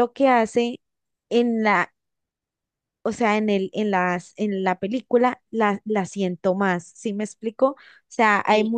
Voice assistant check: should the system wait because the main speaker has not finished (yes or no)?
yes